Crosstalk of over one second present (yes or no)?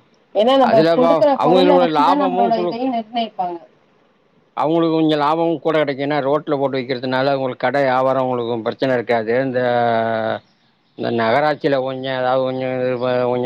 yes